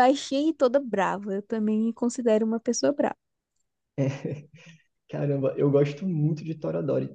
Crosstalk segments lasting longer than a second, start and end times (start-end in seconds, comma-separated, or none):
none